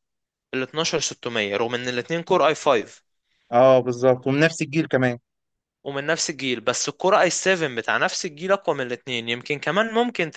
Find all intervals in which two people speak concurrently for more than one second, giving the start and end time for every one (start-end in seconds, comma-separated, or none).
none